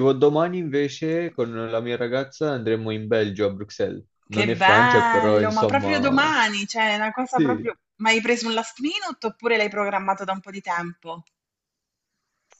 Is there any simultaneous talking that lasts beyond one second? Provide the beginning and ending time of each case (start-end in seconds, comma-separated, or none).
4.3-6.3